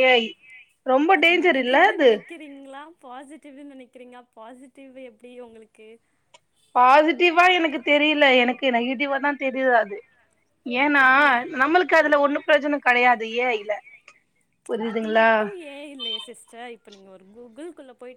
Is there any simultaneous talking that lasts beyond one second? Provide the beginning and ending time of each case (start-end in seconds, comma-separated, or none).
none